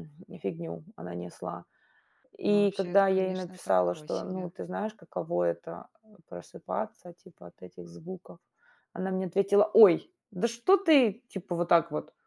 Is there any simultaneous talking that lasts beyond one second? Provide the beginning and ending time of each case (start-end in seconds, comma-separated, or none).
2.4-4.5